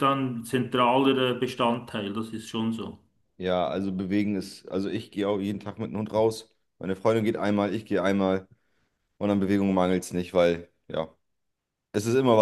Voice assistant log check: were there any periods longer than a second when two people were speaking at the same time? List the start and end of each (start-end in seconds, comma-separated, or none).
none